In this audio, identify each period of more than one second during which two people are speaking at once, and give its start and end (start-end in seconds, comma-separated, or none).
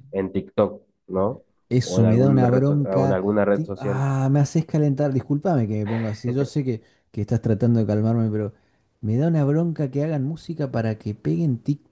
1.8-4.0